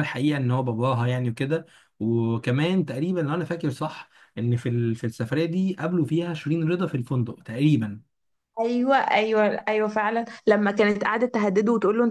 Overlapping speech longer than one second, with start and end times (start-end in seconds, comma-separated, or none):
none